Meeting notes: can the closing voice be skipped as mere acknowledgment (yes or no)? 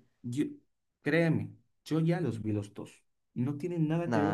no